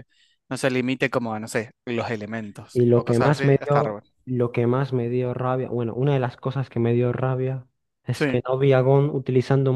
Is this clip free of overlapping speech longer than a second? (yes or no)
no